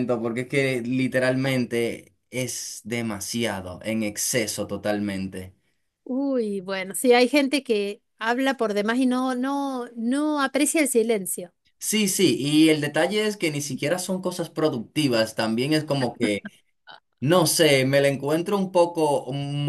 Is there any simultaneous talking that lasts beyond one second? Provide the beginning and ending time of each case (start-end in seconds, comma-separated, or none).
none